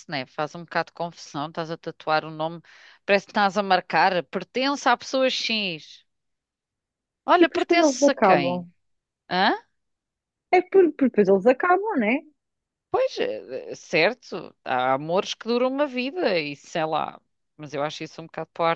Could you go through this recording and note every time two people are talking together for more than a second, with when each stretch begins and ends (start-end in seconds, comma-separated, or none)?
7.4-8.7